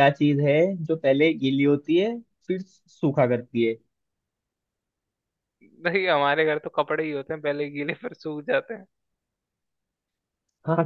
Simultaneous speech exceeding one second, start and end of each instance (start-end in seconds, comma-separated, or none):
none